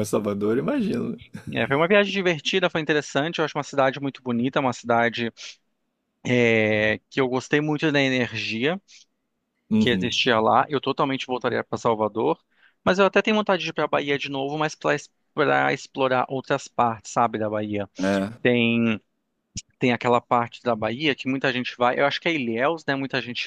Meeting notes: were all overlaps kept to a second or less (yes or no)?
yes